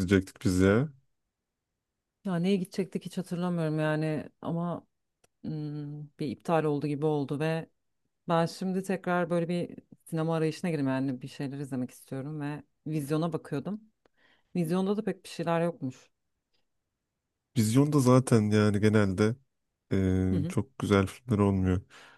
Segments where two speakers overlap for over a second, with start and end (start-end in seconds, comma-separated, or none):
none